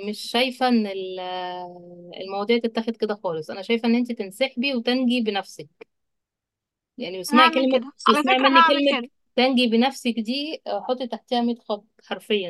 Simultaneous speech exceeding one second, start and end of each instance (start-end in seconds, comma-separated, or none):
7.3-9.0